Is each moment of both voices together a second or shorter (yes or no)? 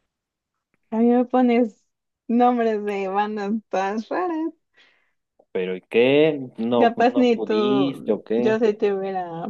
no